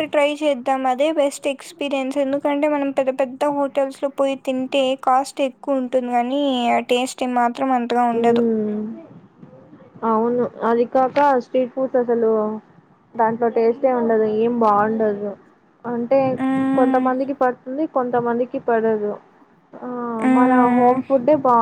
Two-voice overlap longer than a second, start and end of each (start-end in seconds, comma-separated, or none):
none